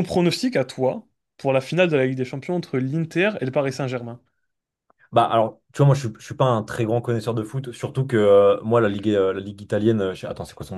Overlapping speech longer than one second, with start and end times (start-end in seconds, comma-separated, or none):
none